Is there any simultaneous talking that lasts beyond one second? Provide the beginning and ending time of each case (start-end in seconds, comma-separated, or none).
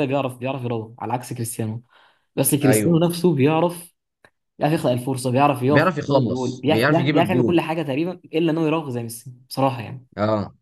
5.7-7.6